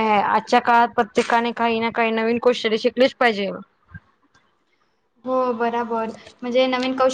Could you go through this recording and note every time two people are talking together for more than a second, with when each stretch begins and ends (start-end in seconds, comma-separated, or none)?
none